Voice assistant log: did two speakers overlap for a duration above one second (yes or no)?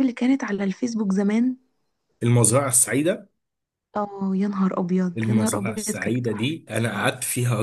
yes